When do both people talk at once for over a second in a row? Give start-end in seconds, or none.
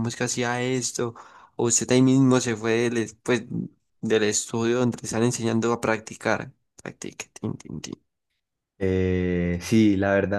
none